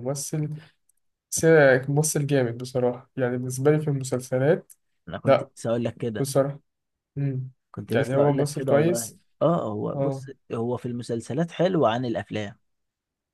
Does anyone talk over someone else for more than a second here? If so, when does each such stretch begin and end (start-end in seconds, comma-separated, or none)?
8.0-9.2